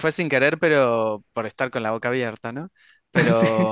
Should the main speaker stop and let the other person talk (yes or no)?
no